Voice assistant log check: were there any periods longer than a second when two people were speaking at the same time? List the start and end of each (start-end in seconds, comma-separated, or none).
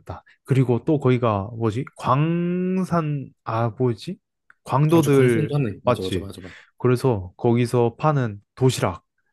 4.9-6.3